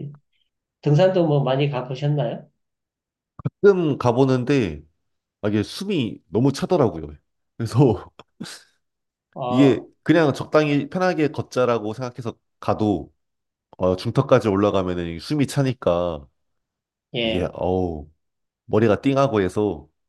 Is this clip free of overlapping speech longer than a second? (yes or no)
yes